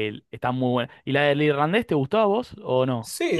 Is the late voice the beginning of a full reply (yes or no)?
yes